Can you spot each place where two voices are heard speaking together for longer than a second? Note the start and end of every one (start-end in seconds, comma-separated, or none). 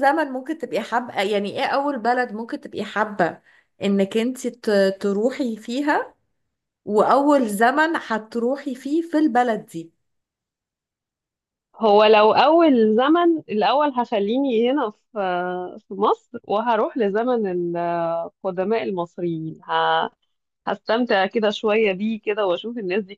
none